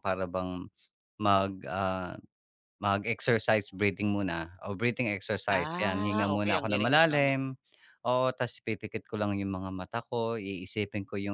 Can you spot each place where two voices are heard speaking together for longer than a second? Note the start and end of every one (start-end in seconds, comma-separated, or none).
5.6-7.3